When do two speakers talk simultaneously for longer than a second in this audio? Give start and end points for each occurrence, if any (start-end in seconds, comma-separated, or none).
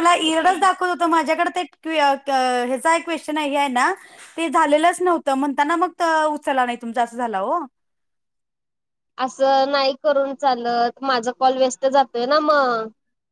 none